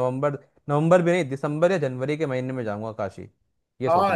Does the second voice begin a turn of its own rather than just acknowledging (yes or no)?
yes